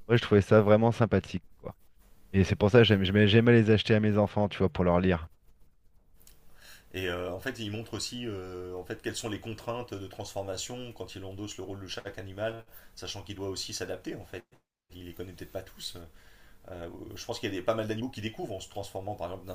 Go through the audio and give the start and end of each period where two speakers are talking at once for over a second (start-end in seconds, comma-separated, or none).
none